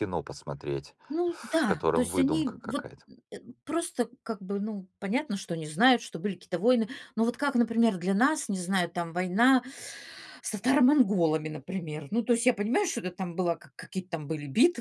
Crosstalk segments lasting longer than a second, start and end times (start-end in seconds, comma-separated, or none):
1.1-2.9